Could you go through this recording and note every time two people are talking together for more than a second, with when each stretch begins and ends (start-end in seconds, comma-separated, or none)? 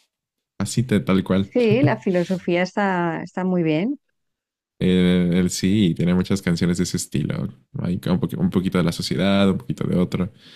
none